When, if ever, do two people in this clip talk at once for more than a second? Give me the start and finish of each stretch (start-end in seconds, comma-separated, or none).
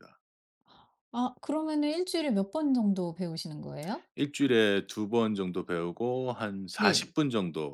none